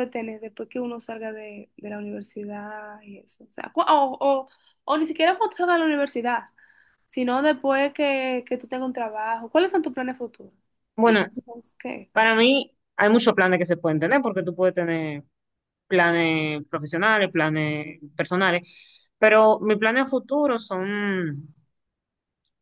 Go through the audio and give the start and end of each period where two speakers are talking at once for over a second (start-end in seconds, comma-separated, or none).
none